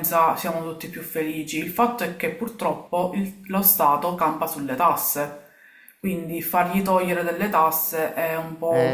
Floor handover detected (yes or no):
yes